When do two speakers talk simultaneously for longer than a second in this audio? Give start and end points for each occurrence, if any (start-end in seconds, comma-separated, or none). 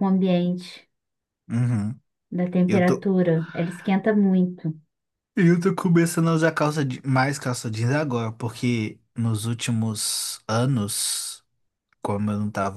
none